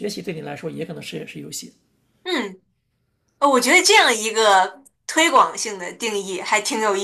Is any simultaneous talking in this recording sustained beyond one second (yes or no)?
no